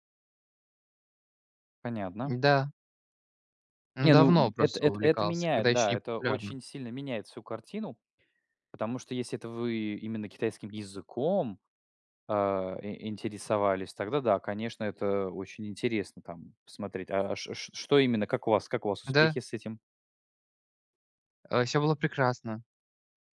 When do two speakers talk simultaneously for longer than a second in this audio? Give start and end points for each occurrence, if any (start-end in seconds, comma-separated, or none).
4.0-6.5